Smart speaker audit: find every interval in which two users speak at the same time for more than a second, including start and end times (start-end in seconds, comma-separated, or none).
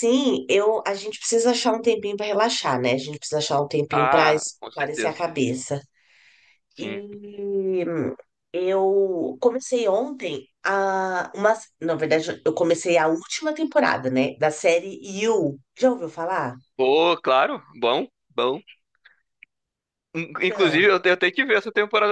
3.9-5.2